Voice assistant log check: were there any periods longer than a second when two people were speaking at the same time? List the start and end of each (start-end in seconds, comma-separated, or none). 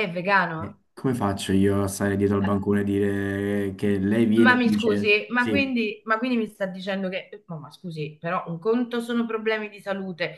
4.3-5.7